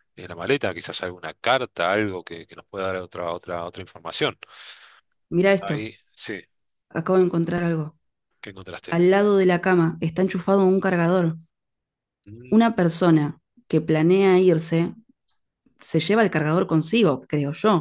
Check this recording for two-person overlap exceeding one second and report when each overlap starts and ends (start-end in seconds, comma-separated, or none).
none